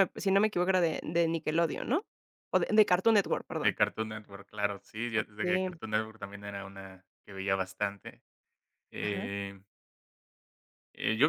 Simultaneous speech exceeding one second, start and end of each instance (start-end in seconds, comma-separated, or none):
none